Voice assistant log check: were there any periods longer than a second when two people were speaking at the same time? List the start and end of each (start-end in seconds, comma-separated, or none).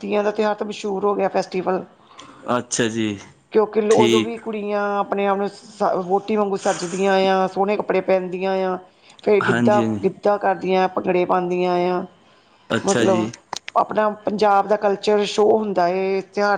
none